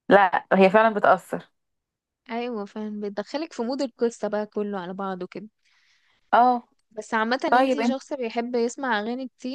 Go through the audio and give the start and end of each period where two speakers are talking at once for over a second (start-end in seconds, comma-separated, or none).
none